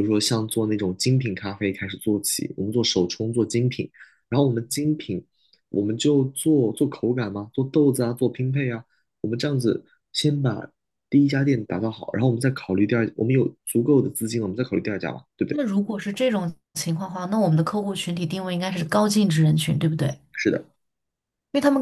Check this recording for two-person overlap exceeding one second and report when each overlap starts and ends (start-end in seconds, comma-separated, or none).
none